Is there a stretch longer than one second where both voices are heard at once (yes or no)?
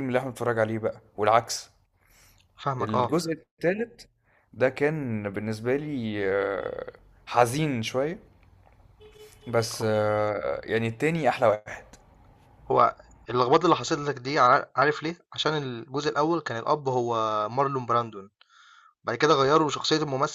no